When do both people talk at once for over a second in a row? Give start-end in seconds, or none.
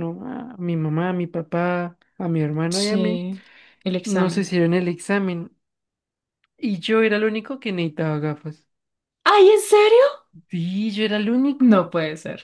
none